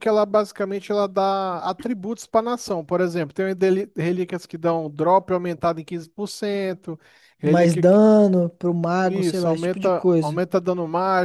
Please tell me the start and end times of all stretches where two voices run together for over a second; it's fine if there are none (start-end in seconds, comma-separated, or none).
9.0-10.4